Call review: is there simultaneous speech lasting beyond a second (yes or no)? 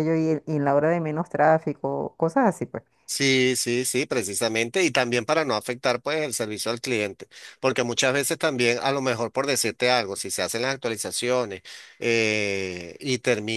no